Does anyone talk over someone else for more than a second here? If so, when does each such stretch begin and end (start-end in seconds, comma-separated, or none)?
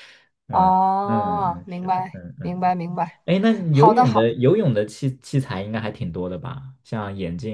0.5-2.6